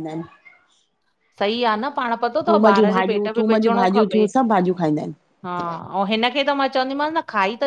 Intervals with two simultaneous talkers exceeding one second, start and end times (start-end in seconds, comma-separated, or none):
2.5-4.2